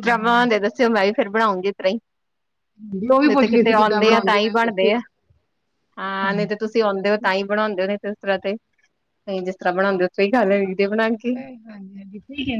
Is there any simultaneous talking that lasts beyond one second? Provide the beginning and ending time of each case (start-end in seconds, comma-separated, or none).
3.3-5.0